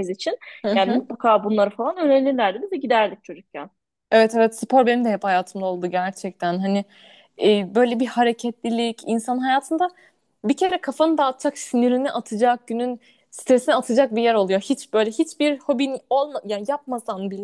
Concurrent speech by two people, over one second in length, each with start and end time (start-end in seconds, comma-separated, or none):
none